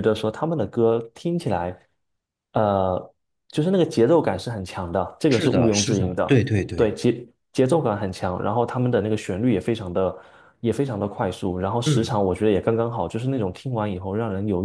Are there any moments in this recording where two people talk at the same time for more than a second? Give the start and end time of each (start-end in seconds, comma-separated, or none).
5.3-6.9